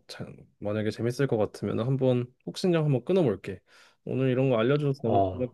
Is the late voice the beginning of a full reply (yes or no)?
no